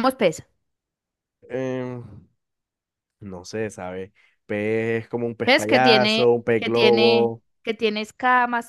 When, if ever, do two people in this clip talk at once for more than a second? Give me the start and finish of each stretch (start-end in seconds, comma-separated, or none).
5.4-7.4